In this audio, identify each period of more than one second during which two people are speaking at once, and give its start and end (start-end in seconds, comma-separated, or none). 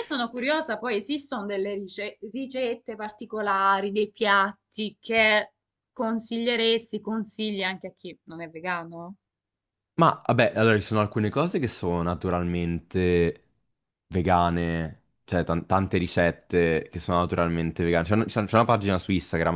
none